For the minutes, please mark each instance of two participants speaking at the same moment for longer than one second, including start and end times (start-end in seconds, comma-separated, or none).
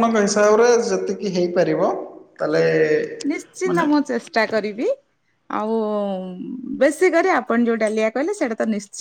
none